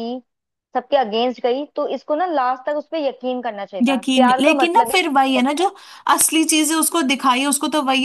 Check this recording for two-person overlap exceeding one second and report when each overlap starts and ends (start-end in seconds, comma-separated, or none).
3.9-5.7